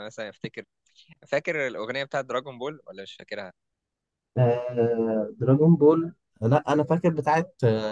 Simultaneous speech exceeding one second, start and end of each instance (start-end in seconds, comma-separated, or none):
none